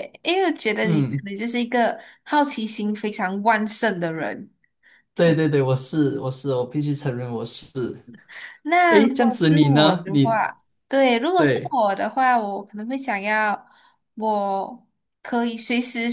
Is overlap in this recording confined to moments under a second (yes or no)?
no